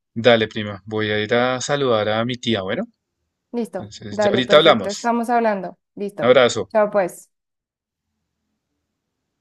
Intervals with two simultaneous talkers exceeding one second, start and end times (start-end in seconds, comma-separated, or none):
3.7-5.1